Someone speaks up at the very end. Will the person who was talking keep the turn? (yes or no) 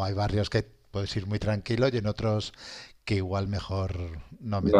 no